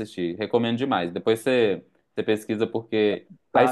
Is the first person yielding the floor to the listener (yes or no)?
yes